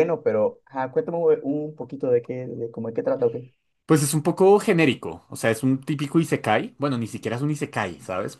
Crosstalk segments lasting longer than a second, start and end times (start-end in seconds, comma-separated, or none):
none